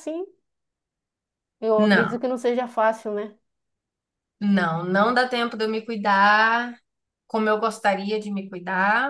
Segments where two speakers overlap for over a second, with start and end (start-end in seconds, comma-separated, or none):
none